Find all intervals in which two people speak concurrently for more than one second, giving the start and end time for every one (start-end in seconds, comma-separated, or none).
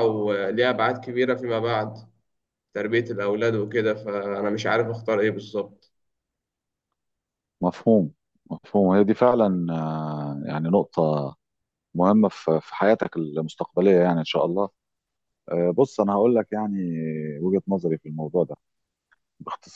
none